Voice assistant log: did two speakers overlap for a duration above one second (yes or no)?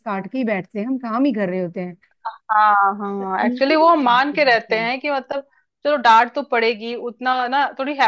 yes